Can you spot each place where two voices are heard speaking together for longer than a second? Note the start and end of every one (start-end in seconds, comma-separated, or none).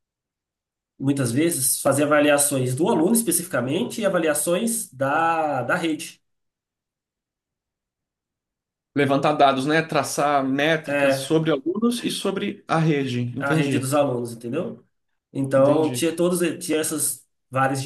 none